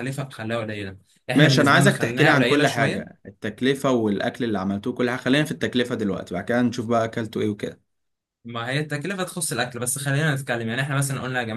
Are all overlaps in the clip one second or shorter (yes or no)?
no